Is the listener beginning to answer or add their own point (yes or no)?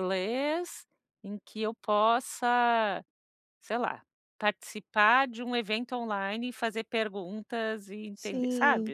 yes